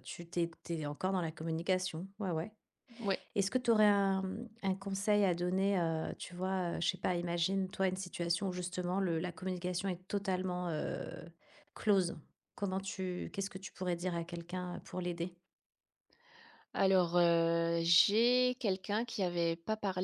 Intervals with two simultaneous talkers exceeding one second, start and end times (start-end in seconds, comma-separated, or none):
none